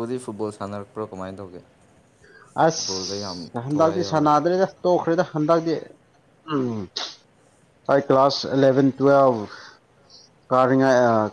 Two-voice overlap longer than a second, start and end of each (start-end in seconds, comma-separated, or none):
2.7-4.3